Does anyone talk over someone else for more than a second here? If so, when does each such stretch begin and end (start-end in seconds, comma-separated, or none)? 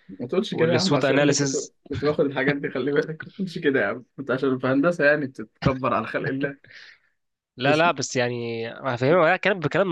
0.5-1.7